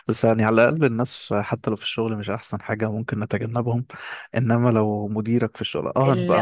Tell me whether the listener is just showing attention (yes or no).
yes